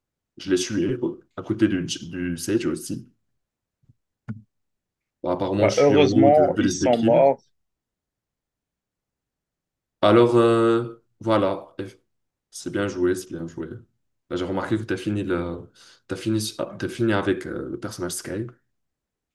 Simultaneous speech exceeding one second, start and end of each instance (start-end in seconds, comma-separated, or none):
5.5-7.2